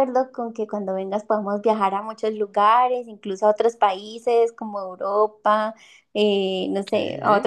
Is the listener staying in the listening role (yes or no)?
yes